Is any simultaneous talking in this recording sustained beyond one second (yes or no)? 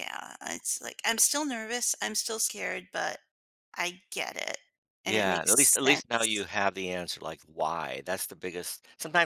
yes